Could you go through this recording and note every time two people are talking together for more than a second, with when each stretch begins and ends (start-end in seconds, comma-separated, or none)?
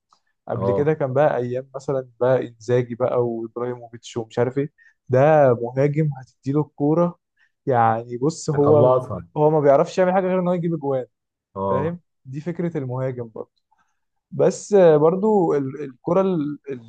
none